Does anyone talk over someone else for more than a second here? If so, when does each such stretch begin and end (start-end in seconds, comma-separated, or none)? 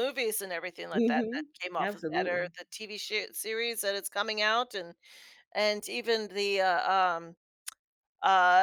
0.9-2.5